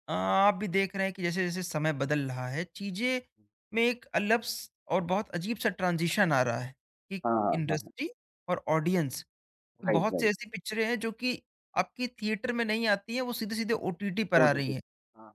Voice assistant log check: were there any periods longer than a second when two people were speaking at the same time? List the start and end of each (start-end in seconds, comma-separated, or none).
none